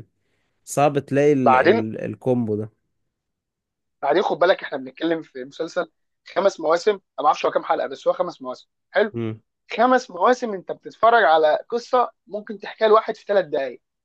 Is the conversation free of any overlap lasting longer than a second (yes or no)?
yes